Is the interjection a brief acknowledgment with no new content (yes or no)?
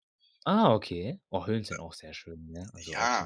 no